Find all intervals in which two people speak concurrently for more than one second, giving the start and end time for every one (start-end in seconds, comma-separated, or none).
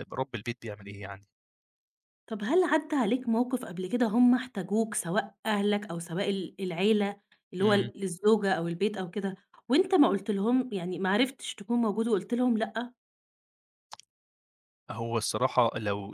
none